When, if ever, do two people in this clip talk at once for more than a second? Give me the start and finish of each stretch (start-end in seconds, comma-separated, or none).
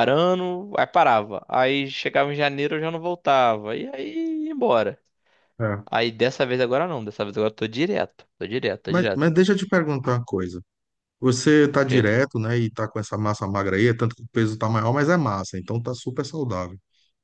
none